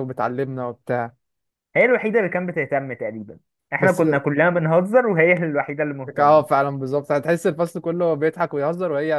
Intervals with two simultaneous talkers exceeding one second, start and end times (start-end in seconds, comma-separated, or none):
none